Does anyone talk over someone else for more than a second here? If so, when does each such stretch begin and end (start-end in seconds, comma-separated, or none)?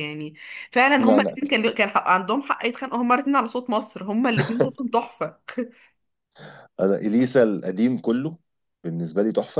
none